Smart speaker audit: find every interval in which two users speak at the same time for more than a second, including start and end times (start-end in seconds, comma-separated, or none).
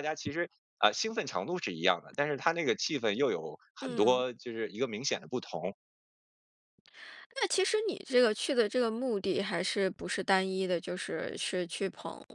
none